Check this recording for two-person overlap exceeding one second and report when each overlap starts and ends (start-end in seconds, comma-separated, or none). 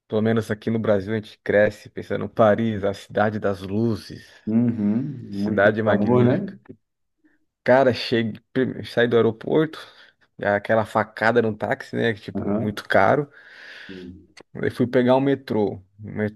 5.3-6.5